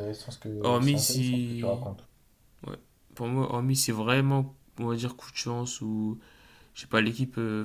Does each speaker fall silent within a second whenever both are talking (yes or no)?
no